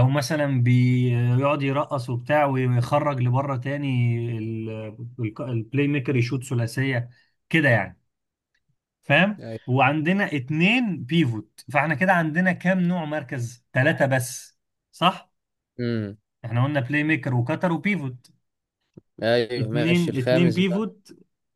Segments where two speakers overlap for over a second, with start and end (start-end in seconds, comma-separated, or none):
19.6-20.9